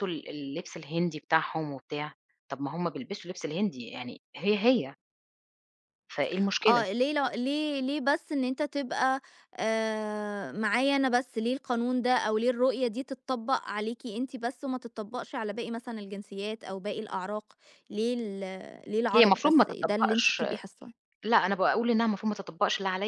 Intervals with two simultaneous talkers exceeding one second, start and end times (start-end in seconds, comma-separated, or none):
19.1-20.4